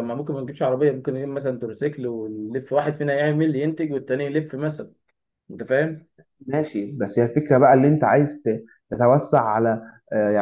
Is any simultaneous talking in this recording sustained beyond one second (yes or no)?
no